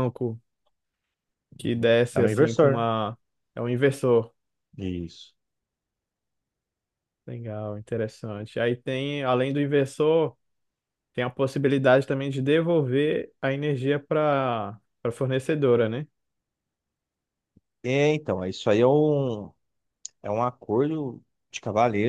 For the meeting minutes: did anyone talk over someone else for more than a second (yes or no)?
yes